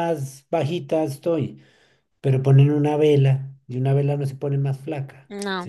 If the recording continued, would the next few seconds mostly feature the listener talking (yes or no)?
yes